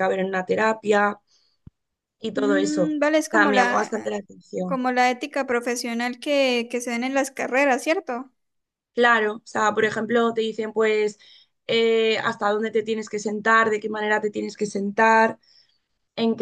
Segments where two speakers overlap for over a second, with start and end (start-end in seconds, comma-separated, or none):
2.3-3.9